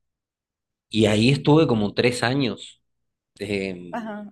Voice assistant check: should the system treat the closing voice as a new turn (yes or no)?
yes